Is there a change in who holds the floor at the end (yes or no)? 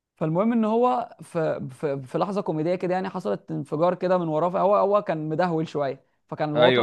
no